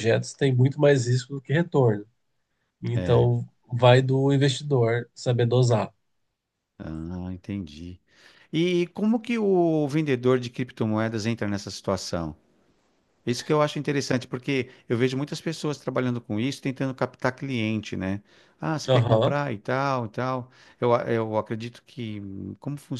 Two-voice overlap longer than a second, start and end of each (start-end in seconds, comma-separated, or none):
none